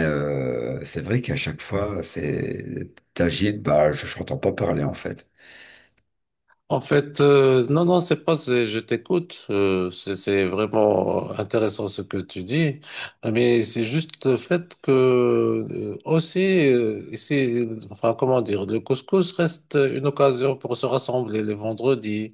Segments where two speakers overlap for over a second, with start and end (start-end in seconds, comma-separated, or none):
none